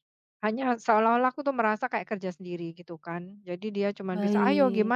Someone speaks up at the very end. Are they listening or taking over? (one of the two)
listening